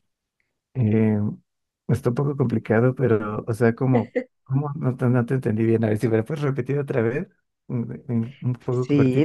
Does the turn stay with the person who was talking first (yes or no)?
no